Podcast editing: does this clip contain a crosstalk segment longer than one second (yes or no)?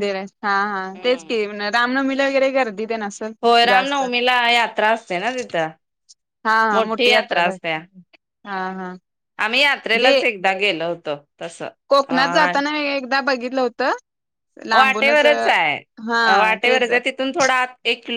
no